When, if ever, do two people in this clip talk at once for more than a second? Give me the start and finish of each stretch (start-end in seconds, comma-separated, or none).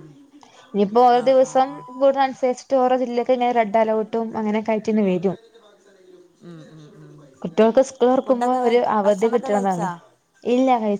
8.2-9.9